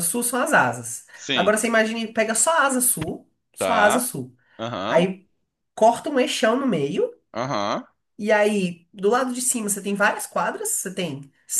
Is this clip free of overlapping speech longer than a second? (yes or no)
yes